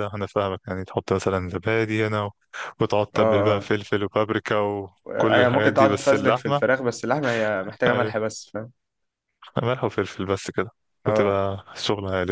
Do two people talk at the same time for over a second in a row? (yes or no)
yes